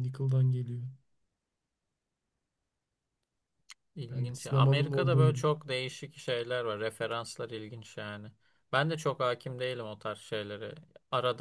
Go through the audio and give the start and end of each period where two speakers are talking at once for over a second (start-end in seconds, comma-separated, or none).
4.1-5.5